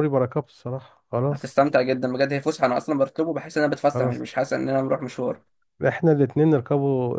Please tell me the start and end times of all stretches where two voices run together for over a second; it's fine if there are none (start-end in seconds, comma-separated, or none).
none